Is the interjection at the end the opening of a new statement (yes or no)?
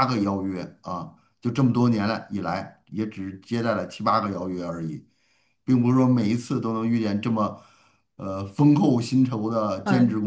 yes